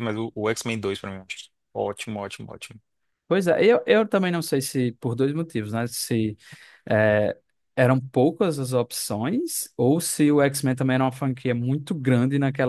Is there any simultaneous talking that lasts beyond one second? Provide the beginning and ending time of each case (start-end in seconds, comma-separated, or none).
none